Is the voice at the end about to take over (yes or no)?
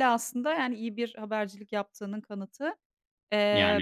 no